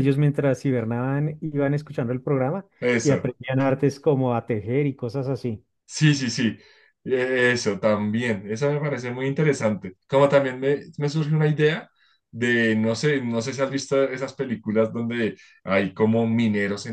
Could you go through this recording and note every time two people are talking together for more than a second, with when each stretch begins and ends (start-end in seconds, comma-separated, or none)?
none